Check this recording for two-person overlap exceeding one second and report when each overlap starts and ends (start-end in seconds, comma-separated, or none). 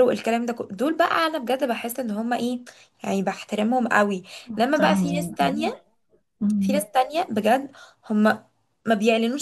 4.5-5.7